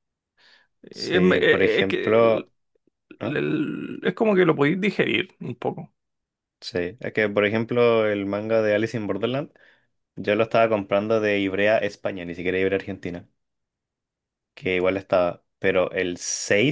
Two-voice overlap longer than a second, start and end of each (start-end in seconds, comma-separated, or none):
0.9-2.5